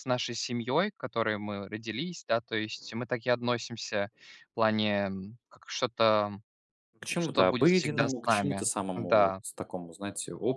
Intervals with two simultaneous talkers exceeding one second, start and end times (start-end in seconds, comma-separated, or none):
7.2-9.4